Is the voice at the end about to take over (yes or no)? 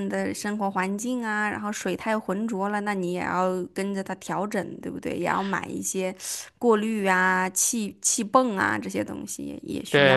yes